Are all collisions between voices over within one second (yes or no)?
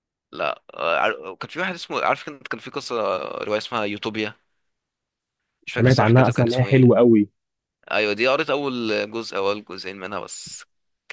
no